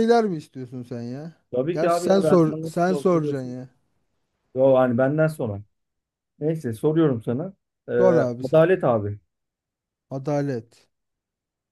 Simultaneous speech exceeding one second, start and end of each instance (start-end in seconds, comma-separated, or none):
1.7-3.6